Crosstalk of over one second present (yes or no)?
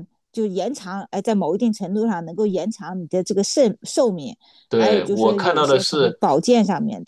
yes